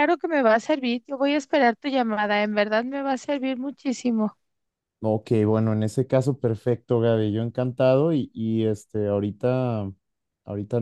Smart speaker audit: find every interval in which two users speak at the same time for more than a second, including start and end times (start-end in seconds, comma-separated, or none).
none